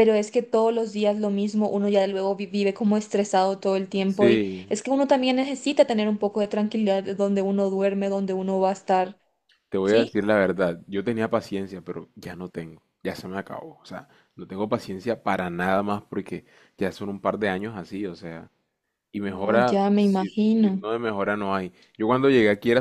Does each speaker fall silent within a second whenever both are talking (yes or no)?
no